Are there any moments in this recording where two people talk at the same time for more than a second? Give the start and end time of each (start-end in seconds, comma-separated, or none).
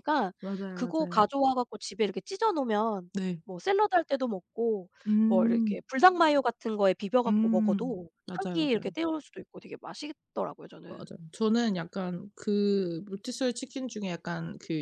7.3-8.9